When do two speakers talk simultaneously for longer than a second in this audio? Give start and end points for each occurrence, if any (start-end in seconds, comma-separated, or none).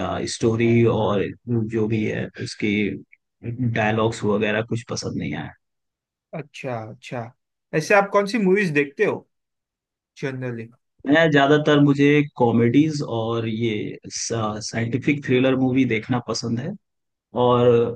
none